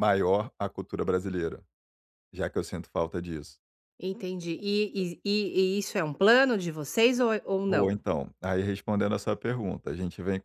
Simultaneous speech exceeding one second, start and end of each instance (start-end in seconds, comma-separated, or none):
none